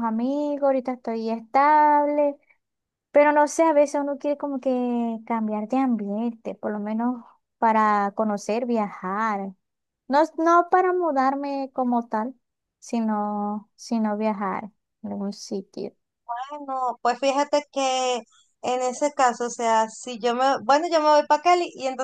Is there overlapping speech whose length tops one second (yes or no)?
no